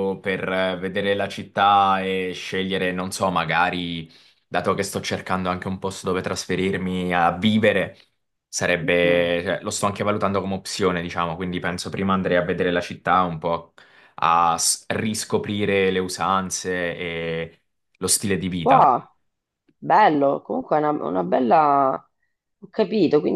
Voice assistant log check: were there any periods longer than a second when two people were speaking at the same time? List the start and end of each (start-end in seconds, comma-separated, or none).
none